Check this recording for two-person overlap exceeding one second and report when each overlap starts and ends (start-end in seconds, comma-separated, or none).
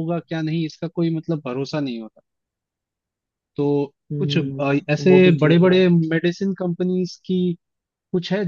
4.1-5.8